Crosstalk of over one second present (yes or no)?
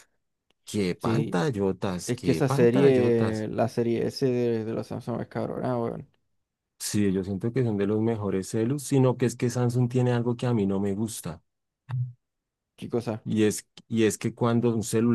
yes